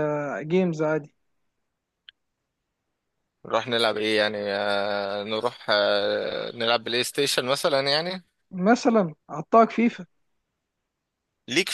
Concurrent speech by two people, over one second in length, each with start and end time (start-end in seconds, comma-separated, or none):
none